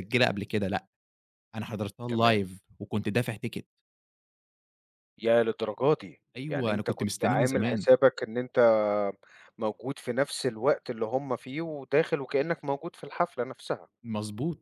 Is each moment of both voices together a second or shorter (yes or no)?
no